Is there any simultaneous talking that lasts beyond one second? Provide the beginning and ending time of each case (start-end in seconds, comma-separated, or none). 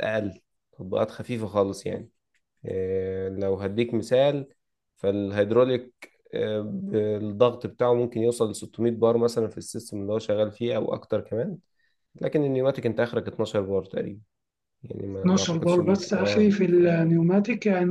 15.1-16.6